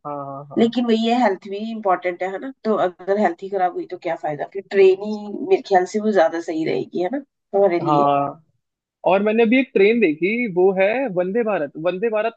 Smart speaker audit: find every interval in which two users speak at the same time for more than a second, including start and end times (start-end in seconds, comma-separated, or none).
none